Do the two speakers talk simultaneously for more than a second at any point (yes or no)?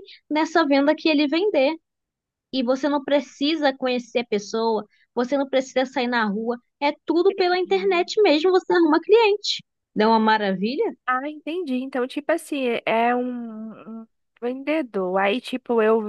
no